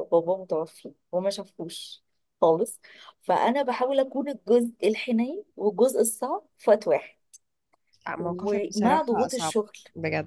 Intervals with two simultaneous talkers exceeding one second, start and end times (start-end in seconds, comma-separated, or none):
8.2-9.6